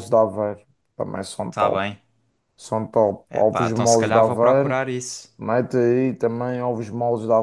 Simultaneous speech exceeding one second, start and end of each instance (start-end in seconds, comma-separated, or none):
3.3-4.8